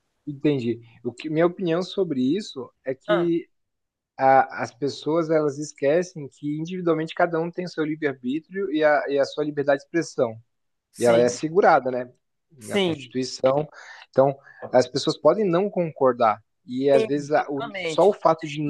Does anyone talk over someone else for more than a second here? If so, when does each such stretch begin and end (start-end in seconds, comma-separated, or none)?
16.9-18.2